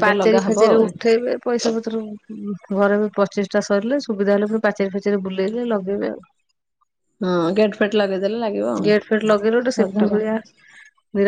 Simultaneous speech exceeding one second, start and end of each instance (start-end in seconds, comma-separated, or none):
8.9-10.1